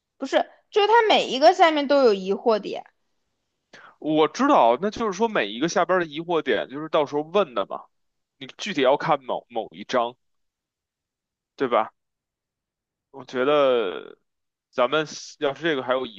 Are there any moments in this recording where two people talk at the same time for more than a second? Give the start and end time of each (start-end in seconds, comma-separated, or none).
none